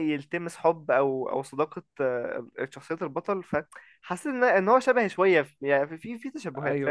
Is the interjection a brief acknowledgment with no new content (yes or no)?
no